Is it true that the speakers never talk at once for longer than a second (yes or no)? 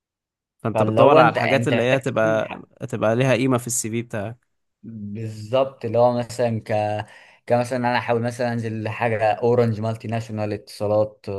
no